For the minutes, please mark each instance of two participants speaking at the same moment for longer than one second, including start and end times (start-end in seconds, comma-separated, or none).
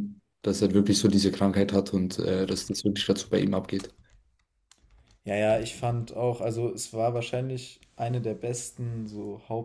none